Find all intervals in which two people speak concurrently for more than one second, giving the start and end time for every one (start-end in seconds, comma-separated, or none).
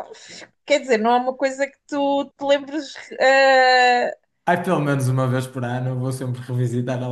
none